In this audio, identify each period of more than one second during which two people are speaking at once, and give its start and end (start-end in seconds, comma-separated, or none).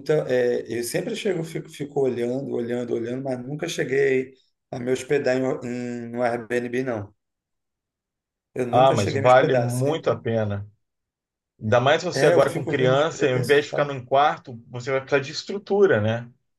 8.7-10.2, 12.1-14.0